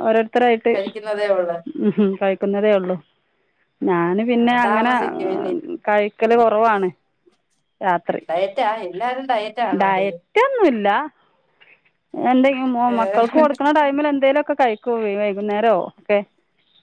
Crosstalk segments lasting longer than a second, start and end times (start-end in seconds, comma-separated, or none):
none